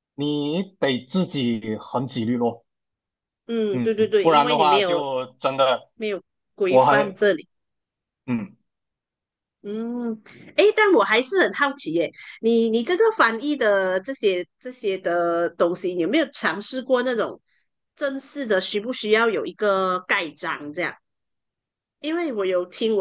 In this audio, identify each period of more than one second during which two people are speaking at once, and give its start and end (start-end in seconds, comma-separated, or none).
3.7-5.0